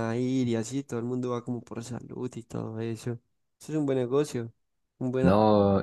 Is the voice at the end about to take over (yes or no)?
yes